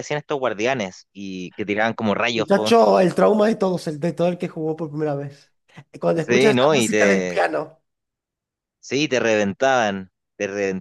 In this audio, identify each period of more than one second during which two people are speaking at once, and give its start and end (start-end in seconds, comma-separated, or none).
6.2-7.4